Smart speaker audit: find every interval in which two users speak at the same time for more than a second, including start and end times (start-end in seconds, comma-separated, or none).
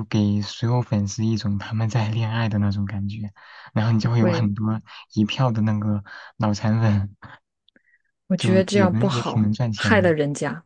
8.4-10.1